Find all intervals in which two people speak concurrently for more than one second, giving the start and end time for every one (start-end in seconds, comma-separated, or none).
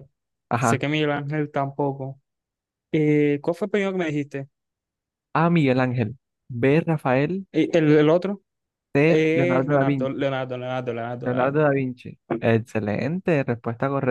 9.1-10.3